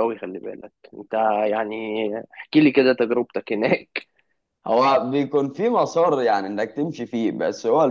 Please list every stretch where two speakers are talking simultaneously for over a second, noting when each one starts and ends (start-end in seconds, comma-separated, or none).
none